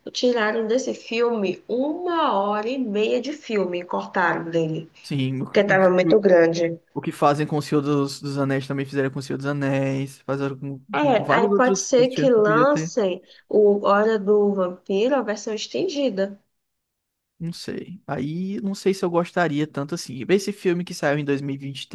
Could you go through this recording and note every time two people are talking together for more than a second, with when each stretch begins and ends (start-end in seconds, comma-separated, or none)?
10.9-12.9